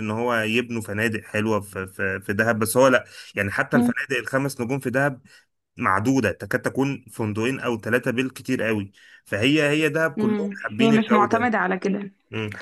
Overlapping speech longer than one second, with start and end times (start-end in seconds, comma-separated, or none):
10.2-11.5